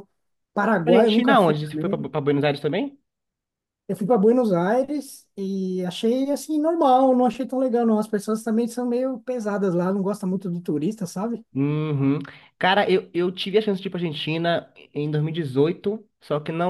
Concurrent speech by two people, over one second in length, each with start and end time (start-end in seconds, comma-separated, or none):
0.7-2.1